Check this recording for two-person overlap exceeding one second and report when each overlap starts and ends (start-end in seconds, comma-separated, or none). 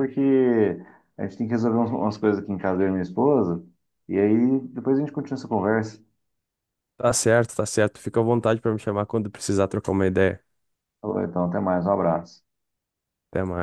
none